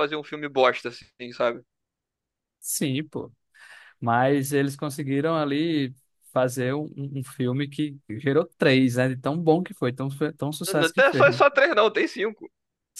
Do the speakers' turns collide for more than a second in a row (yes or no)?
no